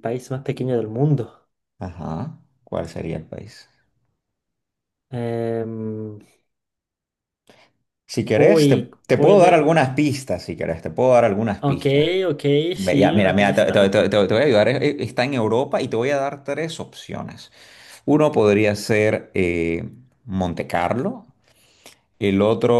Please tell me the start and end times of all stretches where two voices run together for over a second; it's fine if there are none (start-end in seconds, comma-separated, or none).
8.3-9.7, 12.8-14.1